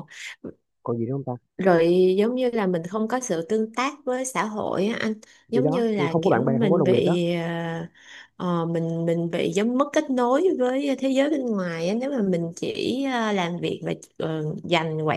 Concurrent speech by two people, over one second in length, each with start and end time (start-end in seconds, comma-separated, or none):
5.5-7.2